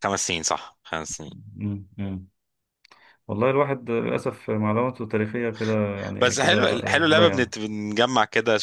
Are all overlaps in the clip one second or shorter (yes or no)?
no